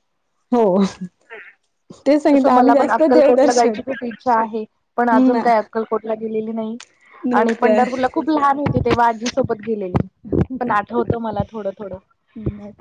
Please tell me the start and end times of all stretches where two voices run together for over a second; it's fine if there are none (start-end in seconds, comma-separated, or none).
2.3-3.8